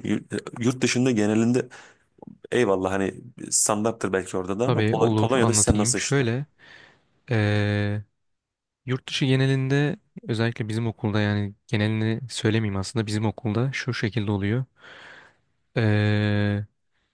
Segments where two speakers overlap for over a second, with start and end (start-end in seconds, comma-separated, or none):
4.7-6.3